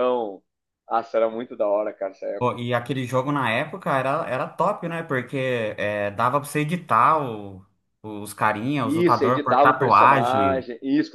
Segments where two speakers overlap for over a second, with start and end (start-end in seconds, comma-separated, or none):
8.8-10.7